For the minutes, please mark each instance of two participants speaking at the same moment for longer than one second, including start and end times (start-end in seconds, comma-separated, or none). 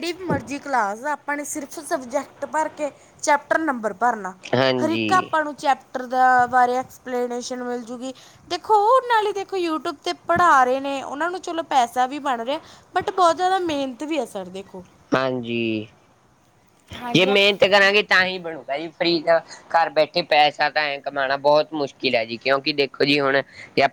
none